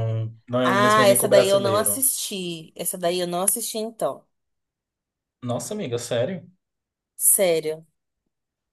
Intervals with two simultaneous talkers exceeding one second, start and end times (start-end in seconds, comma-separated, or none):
0.6-2.0